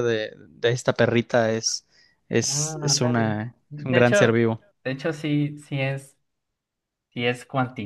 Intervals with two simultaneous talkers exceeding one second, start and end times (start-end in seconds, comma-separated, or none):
2.4-4.3